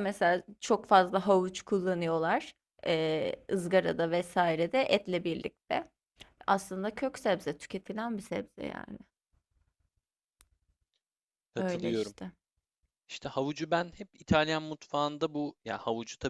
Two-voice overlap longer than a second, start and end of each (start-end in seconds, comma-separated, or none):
none